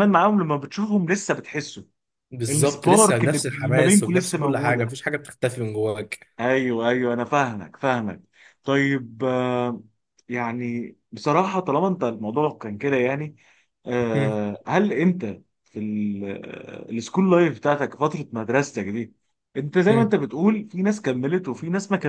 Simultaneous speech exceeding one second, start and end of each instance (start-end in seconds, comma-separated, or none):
2.5-4.9